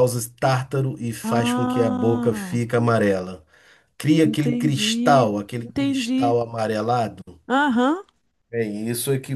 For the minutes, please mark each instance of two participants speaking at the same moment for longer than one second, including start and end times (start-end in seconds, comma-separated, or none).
1.2-2.6, 4.2-6.4